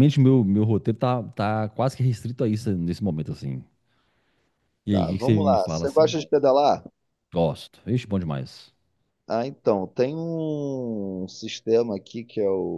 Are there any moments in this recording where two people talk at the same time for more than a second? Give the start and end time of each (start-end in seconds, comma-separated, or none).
4.9-6.2